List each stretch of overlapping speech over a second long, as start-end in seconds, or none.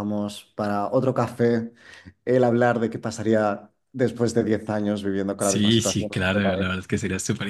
5.4-6.8